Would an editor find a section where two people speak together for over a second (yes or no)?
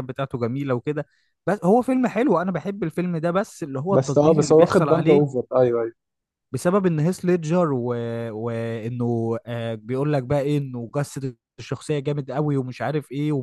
yes